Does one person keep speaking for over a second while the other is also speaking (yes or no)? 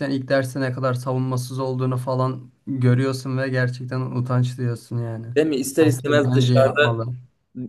yes